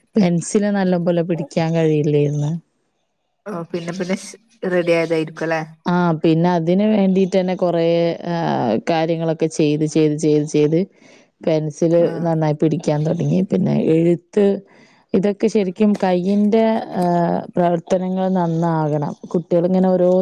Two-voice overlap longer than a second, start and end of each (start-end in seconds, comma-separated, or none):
none